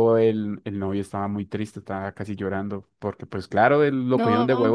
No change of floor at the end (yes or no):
yes